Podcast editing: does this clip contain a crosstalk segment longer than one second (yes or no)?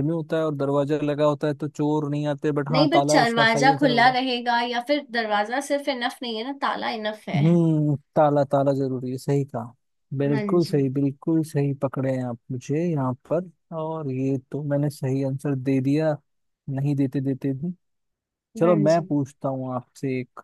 yes